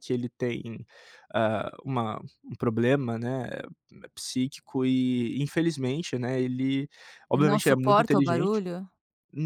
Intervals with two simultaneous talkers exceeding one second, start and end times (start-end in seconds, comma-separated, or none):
7.3-8.6